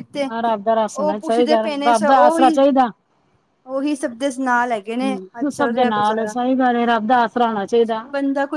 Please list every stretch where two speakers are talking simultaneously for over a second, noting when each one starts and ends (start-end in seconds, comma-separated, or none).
0.9-2.6